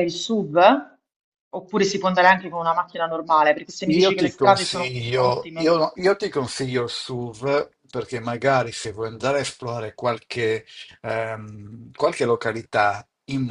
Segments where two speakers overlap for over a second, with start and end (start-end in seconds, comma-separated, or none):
3.8-5.7